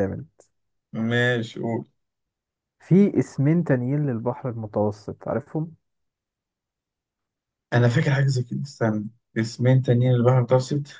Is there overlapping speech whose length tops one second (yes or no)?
no